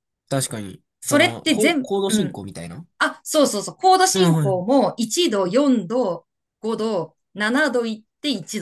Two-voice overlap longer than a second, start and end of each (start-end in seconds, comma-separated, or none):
1.0-2.4